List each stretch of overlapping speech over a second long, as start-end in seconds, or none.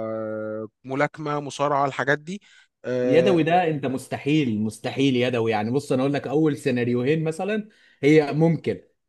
none